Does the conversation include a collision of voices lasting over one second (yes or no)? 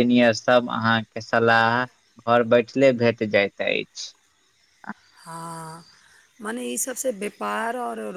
no